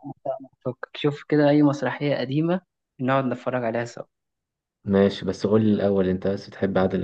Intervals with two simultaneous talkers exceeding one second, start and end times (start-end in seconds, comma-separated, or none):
none